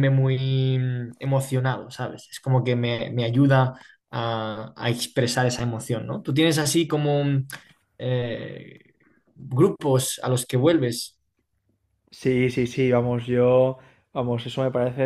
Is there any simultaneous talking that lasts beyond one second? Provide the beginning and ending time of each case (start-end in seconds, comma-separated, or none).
none